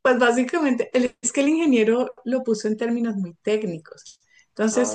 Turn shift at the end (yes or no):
no